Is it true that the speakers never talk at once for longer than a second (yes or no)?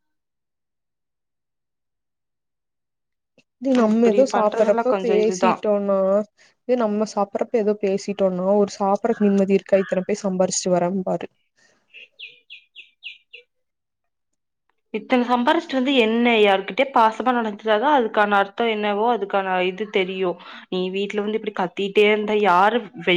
no